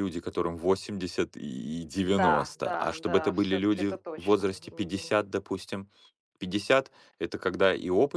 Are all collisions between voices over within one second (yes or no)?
no